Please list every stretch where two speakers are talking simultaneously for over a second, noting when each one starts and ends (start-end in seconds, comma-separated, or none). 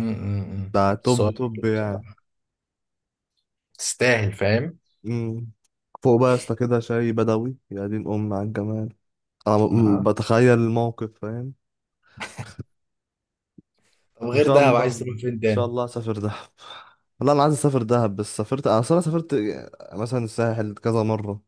0.7-2.1, 14.3-15.7